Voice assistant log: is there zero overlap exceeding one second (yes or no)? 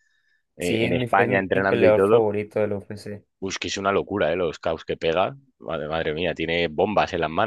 no